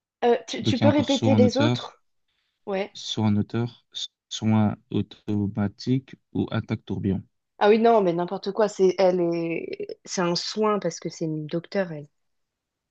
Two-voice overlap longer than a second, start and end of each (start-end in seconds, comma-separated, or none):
0.6-1.9